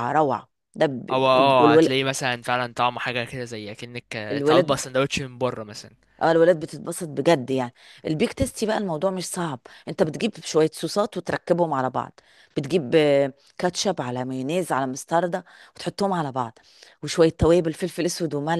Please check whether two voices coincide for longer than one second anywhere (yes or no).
no